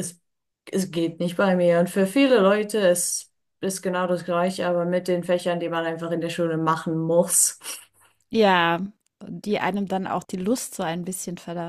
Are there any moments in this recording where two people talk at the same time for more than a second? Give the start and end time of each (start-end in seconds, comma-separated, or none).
none